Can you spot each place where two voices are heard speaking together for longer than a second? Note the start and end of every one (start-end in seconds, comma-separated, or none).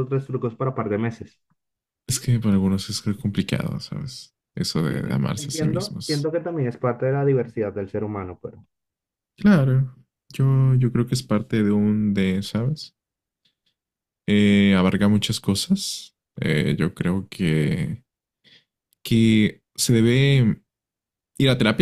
4.9-6.3